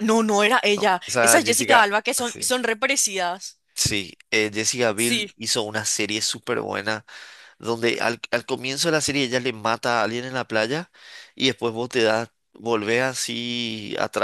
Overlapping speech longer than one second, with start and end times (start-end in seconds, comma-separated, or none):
0.8-2.5